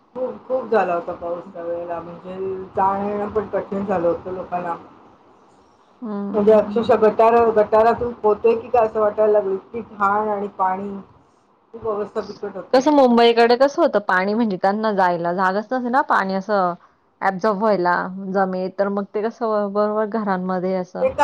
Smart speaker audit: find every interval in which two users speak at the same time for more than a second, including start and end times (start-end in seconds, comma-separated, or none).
none